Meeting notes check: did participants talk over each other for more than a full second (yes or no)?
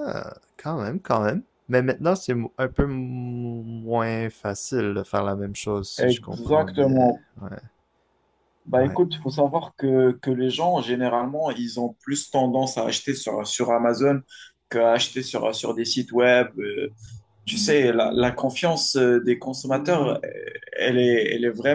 yes